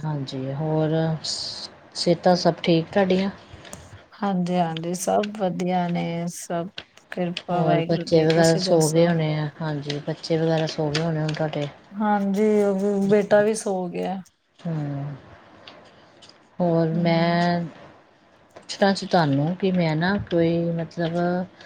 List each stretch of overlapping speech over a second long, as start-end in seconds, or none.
7.5-9.1